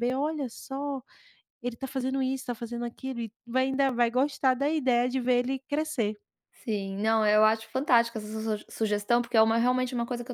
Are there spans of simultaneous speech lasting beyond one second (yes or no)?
no